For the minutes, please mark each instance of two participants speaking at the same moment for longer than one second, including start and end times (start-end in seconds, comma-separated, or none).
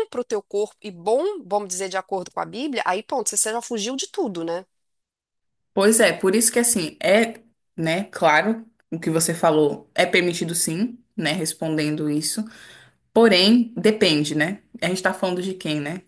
none